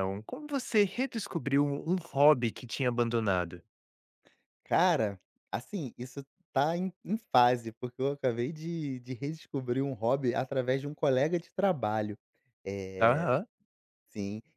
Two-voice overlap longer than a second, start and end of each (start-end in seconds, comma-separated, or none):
none